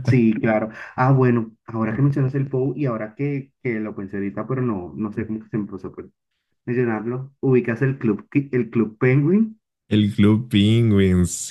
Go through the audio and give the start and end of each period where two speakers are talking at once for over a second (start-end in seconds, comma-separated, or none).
none